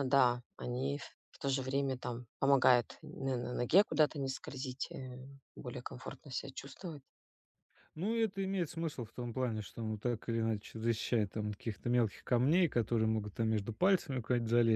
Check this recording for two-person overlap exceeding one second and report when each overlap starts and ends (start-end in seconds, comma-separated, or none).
none